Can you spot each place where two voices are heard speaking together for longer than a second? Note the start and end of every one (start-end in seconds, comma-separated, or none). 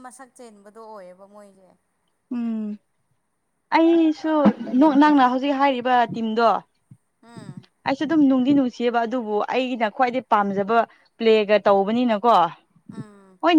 none